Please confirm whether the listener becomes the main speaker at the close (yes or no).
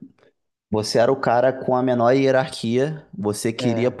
no